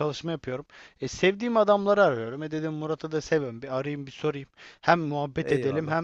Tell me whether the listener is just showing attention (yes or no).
yes